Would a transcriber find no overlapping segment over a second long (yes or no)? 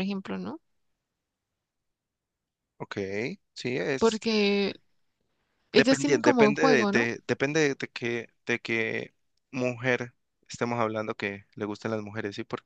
no